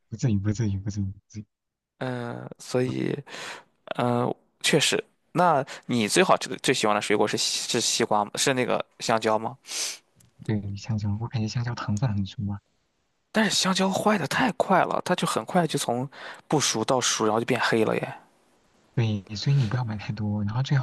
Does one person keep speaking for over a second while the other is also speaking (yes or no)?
no